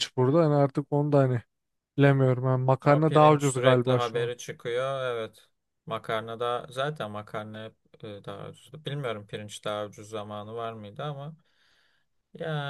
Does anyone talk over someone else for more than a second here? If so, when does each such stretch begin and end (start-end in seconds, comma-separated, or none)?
2.9-4.3